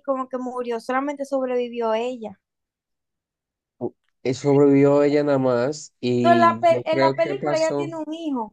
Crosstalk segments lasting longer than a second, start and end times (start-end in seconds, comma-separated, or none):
6.2-7.9